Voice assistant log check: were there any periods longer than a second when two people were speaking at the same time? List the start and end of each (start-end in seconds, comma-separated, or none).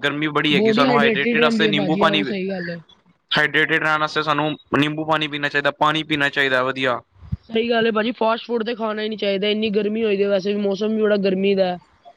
0.6-2.2